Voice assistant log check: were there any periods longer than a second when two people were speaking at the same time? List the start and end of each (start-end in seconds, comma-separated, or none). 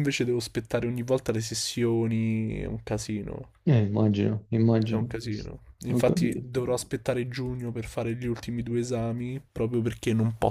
none